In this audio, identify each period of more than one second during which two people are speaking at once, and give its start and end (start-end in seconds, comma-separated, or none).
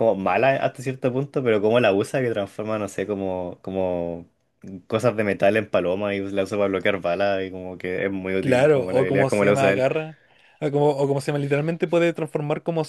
8.4-9.9